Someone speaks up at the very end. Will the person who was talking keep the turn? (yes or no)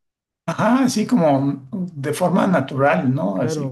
no